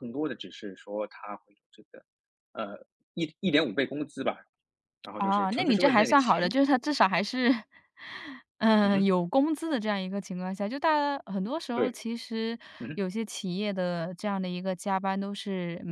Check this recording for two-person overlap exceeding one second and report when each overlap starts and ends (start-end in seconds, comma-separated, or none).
5.2-6.5